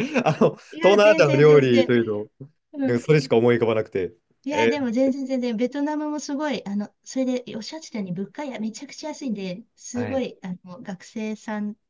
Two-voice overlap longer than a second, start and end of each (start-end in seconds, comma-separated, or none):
0.7-1.9